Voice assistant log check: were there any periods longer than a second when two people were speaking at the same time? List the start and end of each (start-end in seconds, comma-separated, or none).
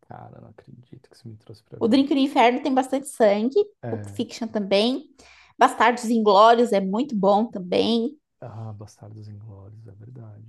none